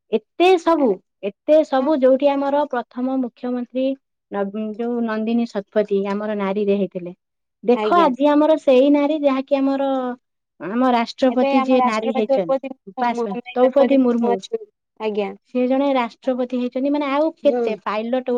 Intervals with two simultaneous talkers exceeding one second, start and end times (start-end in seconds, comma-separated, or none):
11.3-13.5